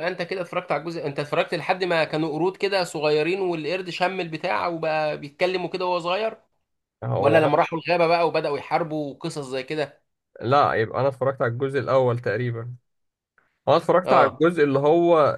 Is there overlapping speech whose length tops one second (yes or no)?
no